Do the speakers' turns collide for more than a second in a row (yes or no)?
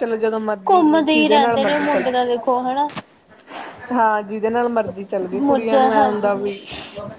yes